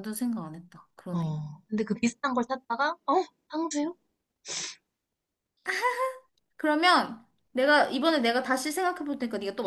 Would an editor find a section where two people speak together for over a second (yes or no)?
no